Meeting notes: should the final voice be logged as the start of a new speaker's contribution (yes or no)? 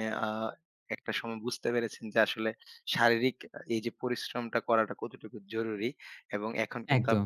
no